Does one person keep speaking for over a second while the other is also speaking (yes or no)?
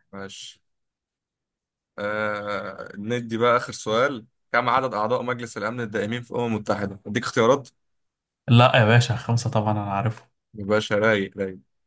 no